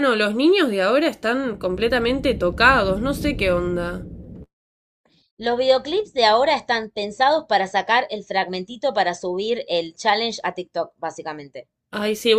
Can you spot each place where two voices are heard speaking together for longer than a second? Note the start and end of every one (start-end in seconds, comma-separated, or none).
none